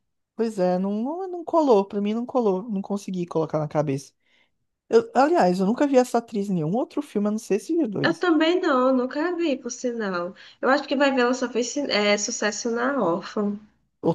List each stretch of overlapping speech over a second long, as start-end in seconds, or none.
none